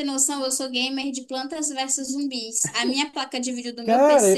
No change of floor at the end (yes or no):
yes